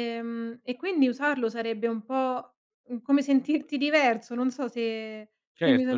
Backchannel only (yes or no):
no